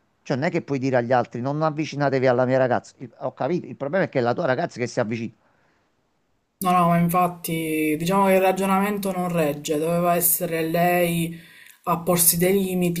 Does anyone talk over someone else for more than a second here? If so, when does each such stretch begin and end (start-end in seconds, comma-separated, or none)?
none